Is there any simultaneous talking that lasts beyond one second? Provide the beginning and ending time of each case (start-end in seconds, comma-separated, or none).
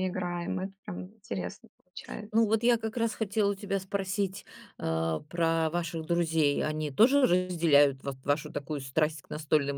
none